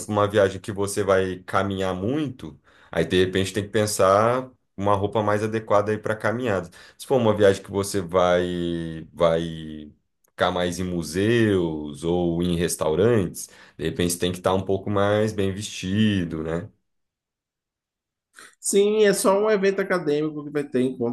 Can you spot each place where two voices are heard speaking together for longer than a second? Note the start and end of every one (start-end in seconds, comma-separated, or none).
none